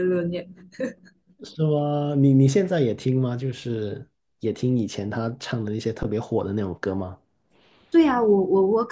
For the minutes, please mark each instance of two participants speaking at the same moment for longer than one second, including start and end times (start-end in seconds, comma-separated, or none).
none